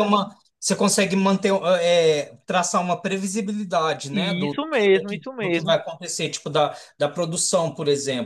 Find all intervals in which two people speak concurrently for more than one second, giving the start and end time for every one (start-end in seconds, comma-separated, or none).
4.1-5.8